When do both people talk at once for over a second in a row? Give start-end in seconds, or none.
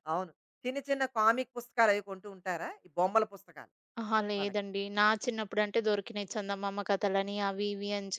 none